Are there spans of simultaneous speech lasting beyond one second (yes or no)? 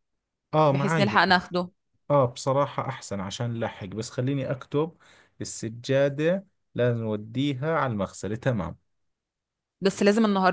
no